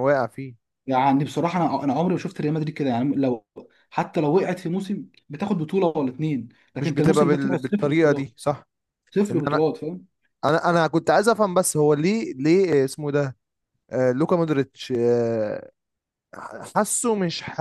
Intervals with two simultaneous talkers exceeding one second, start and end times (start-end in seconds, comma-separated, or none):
6.8-8.3